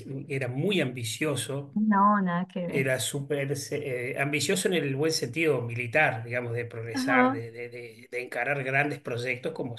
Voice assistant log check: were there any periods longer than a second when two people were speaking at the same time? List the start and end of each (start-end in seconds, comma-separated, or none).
none